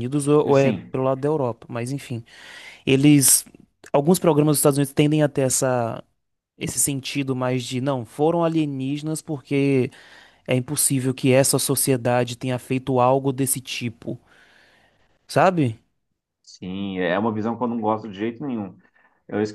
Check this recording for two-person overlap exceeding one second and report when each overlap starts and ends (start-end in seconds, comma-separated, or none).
none